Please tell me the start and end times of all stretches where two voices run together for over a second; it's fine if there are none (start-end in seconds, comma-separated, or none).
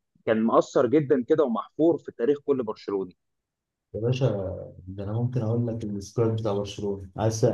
none